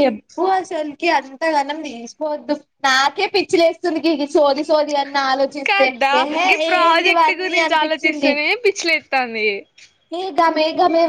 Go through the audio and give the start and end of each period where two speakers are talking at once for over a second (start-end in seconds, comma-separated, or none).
5.7-8.3